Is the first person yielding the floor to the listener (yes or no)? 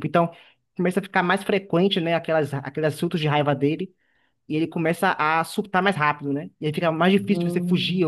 no